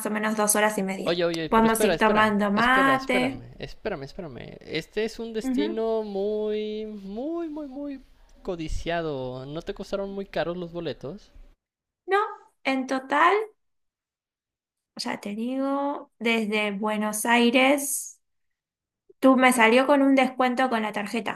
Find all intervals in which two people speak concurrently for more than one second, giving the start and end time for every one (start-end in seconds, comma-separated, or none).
1.0-3.5